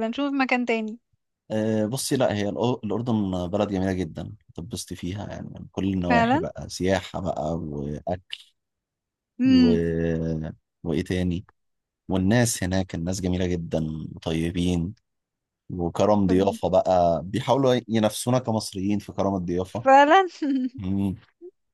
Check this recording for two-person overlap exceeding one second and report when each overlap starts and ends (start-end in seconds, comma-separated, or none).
none